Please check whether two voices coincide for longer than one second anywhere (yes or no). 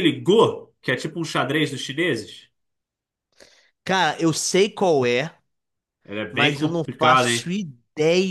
yes